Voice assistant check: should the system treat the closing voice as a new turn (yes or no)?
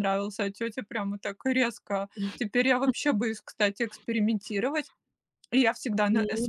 no